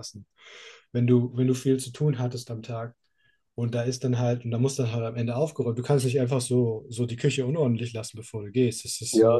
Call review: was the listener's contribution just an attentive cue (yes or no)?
no